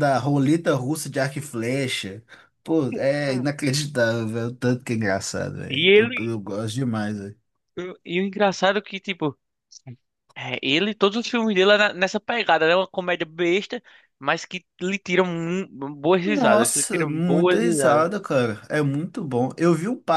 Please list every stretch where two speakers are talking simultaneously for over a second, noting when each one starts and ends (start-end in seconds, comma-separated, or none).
16.2-18.1